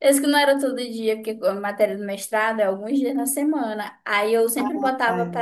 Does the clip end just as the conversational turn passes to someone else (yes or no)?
no